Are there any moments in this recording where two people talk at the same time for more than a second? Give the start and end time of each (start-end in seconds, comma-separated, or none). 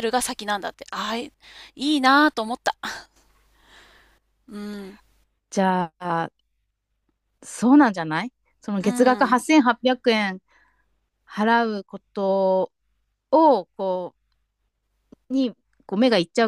none